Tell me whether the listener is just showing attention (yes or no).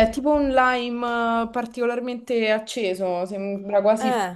yes